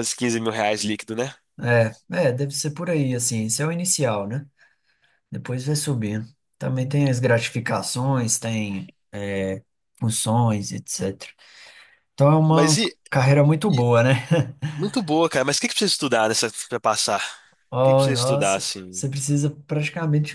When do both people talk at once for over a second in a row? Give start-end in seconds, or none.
17.8-19.0